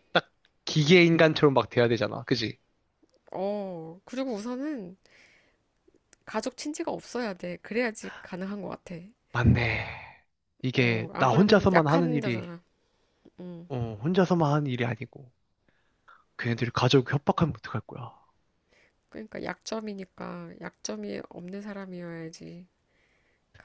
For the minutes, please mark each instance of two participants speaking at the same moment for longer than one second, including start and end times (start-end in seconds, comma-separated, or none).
10.8-12.5